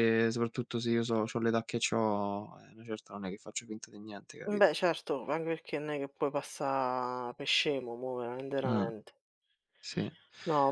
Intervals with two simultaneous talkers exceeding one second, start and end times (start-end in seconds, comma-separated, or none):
none